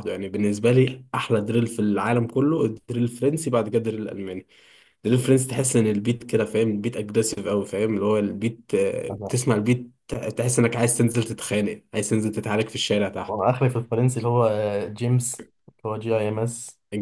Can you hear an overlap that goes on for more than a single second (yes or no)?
no